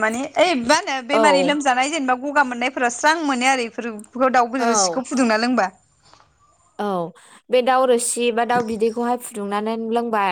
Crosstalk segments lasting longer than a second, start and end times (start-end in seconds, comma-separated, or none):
none